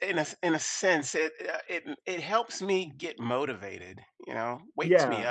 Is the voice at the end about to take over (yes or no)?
yes